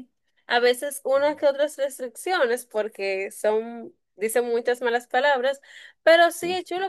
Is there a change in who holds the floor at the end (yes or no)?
no